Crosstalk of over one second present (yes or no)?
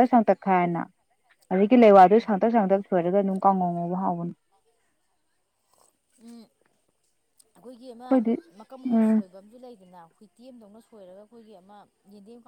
no